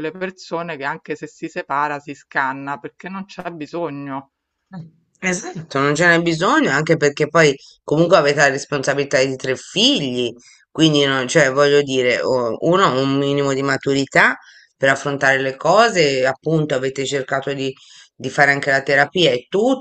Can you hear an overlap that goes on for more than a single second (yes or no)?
no